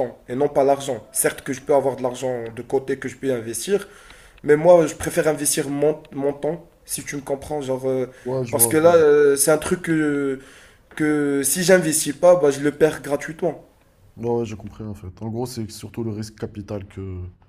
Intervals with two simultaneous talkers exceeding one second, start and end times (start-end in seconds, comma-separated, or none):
none